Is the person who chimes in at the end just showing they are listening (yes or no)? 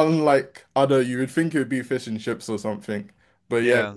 yes